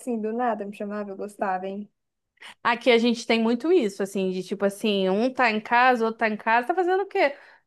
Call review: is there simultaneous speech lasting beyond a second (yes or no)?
no